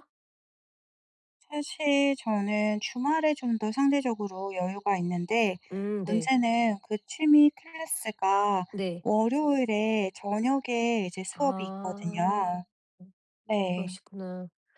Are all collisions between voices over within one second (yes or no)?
no